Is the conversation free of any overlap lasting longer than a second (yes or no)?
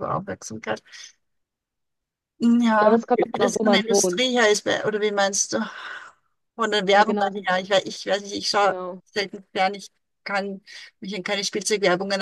no